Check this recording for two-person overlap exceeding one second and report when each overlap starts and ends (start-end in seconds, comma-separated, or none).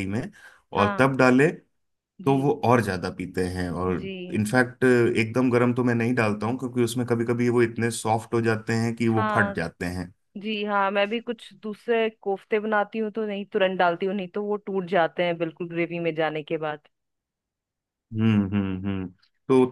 none